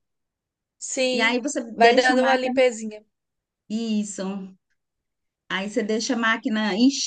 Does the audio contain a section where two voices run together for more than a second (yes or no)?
yes